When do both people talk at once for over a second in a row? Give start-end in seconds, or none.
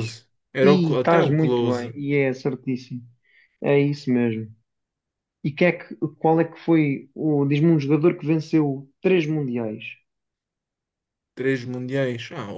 0.6-1.9